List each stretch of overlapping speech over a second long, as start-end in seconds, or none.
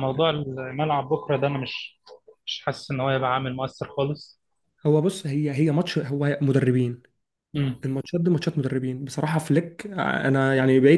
none